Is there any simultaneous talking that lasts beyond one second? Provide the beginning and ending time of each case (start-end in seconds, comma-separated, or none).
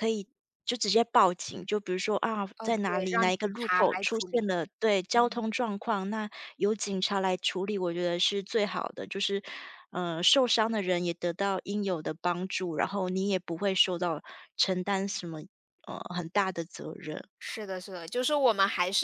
2.6-4.5